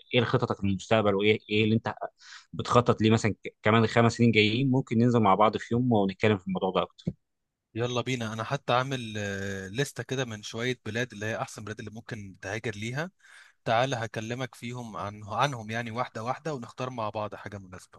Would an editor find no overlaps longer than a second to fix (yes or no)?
yes